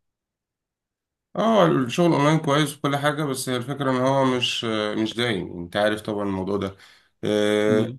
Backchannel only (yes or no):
yes